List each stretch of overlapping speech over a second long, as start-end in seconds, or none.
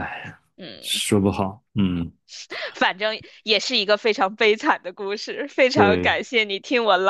none